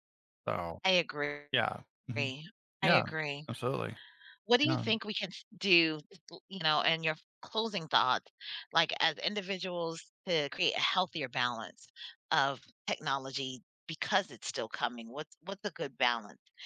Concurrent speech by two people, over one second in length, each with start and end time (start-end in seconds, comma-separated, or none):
none